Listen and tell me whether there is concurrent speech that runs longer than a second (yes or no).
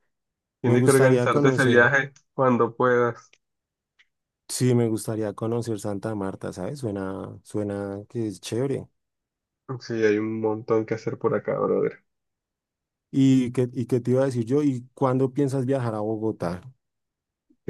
yes